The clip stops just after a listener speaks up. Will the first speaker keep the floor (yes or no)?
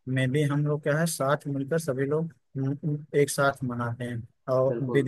yes